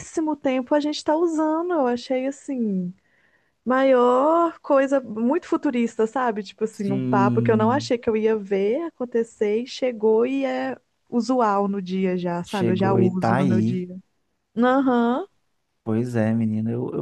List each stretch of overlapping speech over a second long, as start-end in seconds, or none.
6.7-7.9, 12.4-13.9